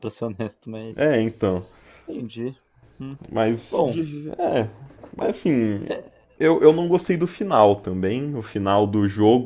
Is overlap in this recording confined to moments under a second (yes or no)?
yes